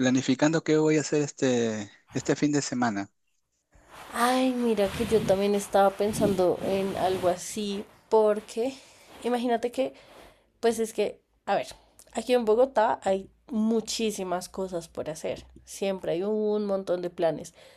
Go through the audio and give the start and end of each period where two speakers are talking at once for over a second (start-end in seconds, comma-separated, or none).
none